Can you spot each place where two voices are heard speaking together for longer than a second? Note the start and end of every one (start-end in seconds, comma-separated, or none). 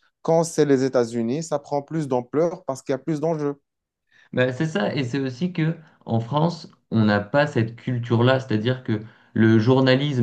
none